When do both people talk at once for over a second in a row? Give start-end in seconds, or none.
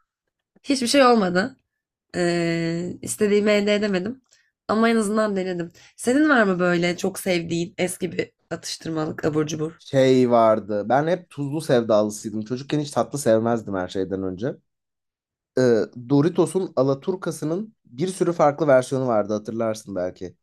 none